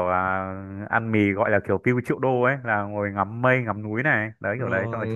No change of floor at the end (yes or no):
no